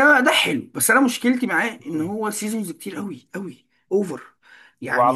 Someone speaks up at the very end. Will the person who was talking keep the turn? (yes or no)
yes